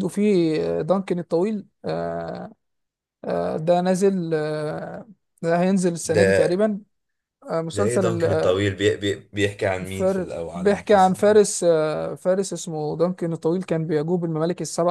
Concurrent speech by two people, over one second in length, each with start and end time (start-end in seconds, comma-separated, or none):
9.8-11.4